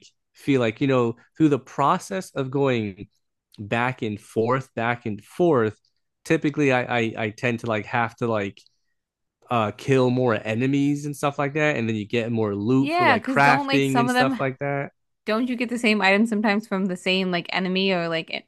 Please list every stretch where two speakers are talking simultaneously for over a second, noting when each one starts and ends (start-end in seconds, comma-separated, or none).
12.8-14.4